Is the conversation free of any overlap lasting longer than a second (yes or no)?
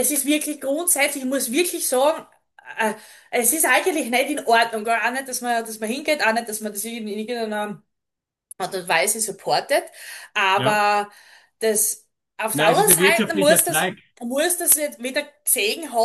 no